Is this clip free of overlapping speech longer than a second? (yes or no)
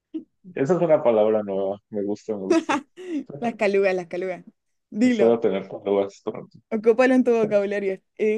yes